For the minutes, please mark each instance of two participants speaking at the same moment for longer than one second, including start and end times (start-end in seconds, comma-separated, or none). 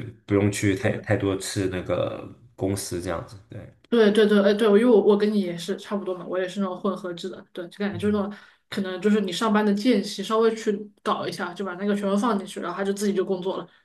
none